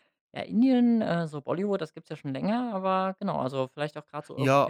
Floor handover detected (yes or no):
yes